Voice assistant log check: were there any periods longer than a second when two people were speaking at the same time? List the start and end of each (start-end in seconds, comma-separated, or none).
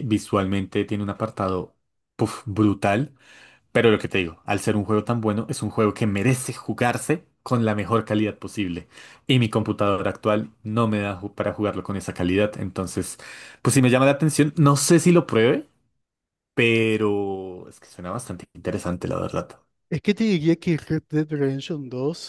none